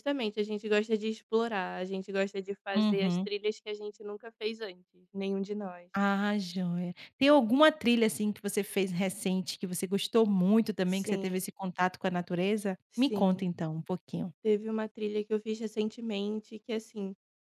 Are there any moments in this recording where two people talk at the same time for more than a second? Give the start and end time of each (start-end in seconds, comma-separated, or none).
none